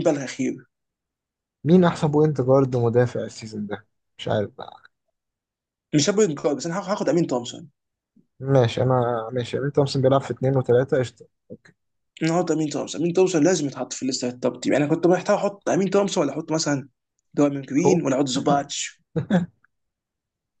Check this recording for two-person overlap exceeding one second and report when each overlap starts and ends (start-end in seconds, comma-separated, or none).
none